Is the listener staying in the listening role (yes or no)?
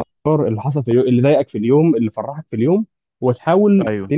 yes